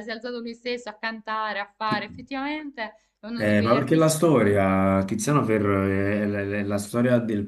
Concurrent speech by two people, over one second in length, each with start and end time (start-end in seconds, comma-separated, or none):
3.3-4.8